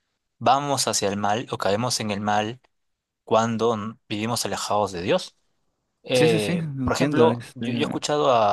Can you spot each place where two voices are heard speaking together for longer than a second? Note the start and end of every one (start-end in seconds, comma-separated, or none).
6.1-7.7